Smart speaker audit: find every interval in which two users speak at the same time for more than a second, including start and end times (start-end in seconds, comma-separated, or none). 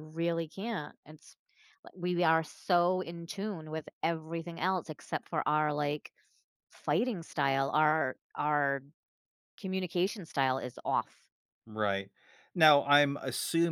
none